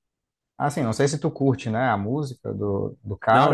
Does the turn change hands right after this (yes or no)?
yes